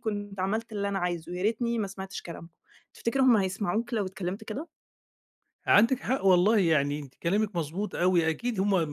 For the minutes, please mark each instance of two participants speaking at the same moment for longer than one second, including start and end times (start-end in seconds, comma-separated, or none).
none